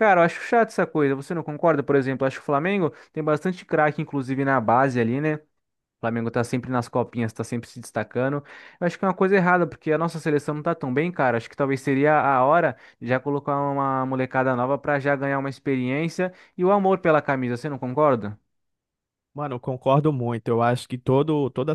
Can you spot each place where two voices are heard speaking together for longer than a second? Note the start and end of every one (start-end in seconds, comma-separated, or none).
none